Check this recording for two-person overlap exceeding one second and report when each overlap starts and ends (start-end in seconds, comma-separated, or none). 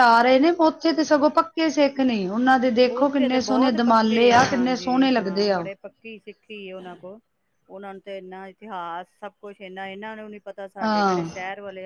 3.0-5.7